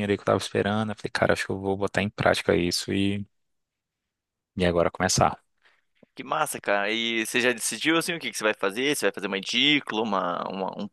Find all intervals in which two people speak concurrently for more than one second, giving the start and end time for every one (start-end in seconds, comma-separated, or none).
none